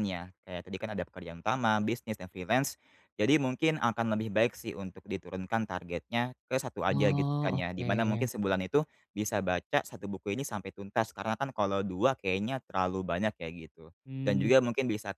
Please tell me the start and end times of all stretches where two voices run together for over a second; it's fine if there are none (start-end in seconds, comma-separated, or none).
6.9-8.3